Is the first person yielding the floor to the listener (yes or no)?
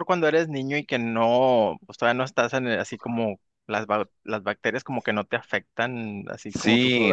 yes